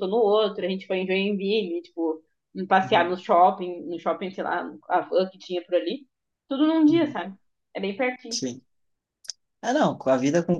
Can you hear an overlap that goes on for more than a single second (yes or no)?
no